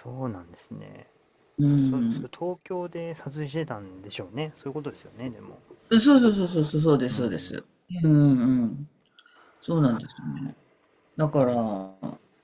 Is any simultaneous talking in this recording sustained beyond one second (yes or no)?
no